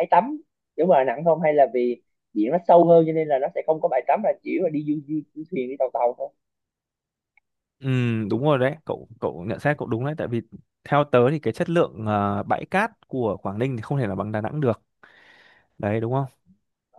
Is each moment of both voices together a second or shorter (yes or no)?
yes